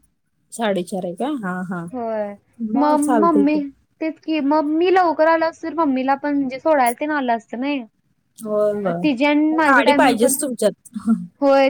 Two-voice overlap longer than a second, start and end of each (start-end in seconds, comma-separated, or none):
8.7-10.3